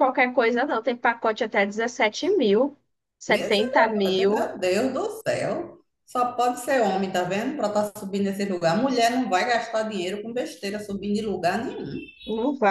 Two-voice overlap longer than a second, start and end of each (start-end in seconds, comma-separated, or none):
3.3-4.5